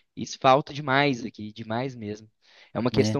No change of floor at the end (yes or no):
yes